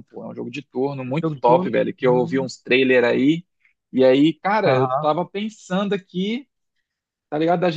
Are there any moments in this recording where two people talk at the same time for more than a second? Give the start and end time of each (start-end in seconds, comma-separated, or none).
1.1-2.5